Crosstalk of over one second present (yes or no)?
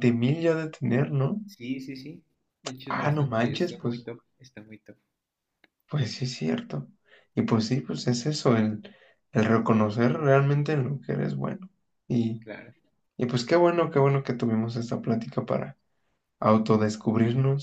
yes